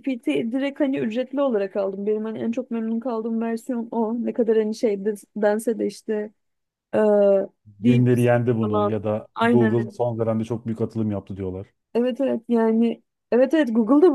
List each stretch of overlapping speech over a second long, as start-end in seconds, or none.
7.8-9.9